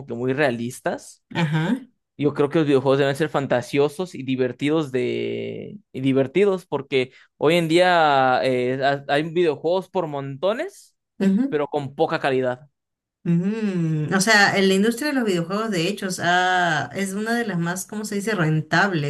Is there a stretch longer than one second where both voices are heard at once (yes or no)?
no